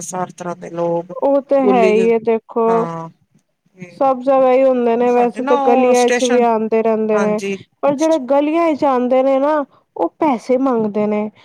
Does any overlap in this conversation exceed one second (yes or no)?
yes